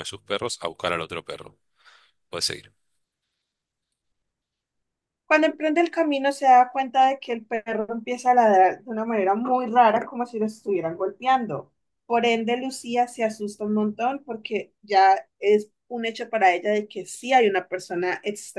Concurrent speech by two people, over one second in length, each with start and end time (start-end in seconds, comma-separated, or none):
none